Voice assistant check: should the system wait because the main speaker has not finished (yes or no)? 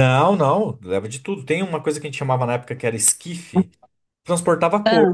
yes